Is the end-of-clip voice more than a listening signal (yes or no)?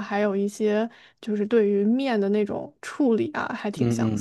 yes